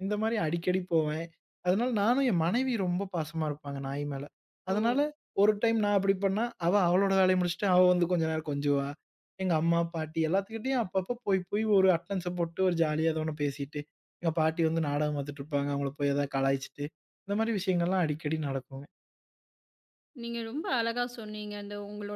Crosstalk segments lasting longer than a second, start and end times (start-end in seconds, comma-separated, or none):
none